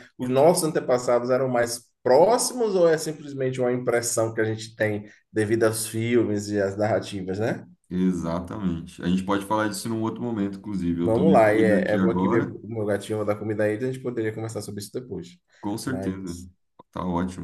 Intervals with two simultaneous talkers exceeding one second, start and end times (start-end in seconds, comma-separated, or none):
11.0-12.5